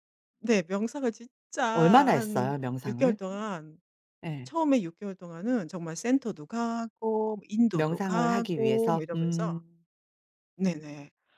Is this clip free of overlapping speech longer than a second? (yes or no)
no